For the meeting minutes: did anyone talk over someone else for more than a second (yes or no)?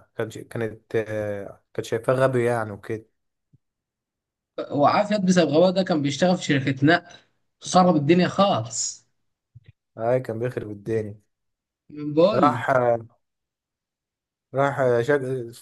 no